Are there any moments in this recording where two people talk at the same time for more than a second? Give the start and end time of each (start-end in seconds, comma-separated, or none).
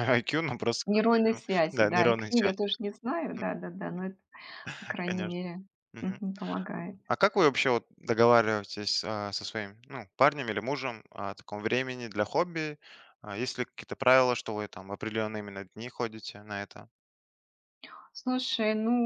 0.8-2.5